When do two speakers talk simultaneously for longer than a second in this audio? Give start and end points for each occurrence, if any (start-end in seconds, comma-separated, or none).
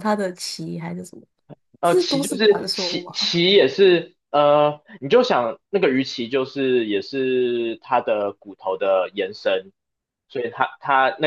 1.8-3.3